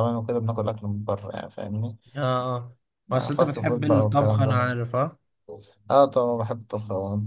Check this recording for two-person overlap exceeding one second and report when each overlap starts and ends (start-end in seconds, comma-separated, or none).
3.1-4.7